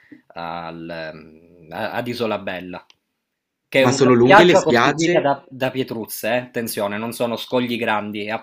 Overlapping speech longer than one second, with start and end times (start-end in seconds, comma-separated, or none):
3.8-5.3